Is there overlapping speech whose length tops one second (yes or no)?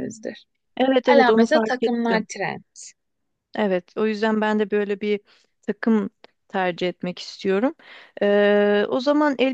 yes